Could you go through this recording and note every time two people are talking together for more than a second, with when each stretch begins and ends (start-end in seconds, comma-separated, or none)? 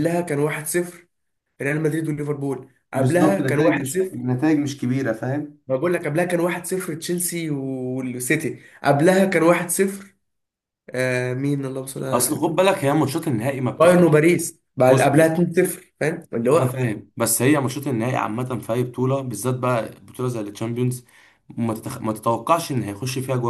2.9-4.2